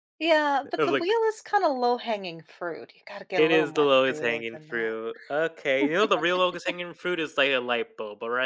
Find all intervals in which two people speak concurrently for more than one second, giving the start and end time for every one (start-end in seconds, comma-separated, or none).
3.3-5.0